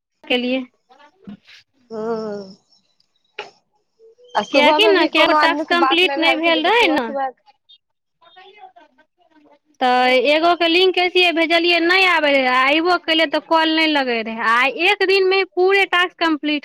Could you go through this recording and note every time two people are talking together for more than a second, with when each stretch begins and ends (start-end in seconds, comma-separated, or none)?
4.5-7.0